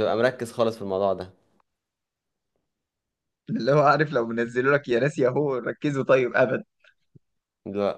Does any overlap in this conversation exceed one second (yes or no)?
no